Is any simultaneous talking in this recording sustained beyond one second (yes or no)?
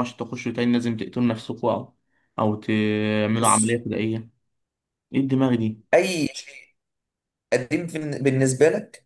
no